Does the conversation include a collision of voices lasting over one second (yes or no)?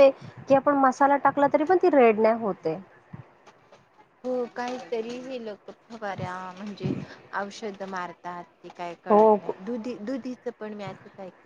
no